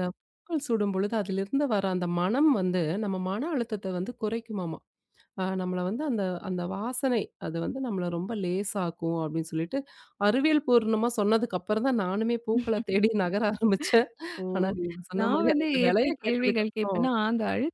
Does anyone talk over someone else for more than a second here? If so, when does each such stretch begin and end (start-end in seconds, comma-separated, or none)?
15.2-17.1